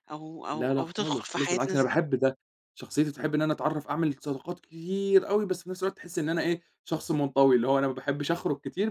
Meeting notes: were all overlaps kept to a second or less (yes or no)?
no